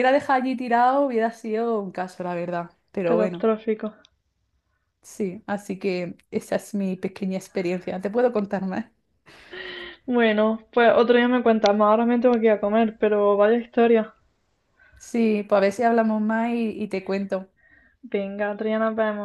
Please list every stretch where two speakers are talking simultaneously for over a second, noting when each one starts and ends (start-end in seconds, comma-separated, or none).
none